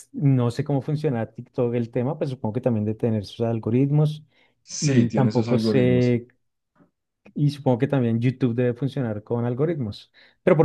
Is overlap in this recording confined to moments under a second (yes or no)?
no